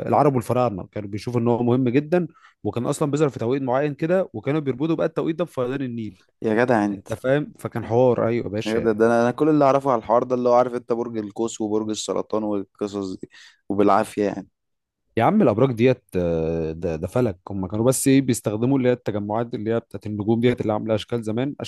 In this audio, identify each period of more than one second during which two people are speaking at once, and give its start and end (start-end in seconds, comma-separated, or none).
none